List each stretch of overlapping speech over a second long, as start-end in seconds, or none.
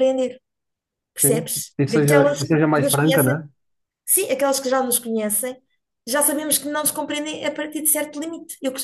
1.2-3.4